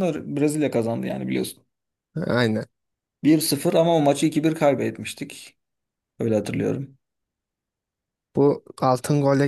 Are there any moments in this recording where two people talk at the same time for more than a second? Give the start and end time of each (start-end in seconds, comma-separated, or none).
none